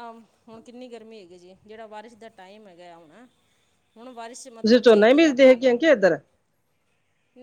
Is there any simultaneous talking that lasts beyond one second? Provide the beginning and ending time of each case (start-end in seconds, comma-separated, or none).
4.5-5.8